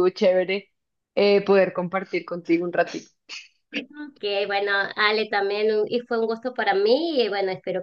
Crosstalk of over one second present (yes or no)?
no